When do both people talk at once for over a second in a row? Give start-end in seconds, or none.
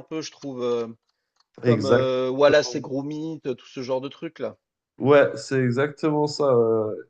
none